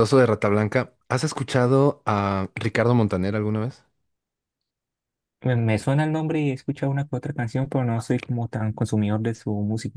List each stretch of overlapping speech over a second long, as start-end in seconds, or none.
none